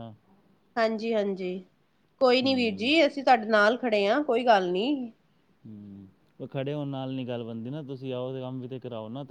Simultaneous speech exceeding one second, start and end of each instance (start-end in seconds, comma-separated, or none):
none